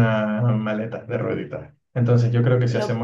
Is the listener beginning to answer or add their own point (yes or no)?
no